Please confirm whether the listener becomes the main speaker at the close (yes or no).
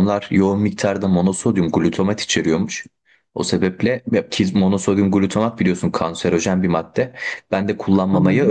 no